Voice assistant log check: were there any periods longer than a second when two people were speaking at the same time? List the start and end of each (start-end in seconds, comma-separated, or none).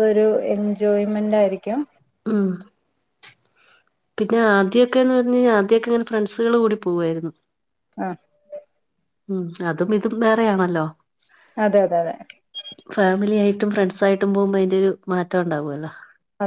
none